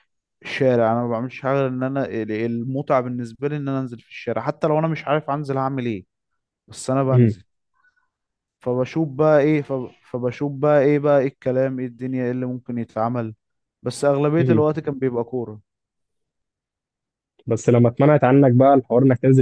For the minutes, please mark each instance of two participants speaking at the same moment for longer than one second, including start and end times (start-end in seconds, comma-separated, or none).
none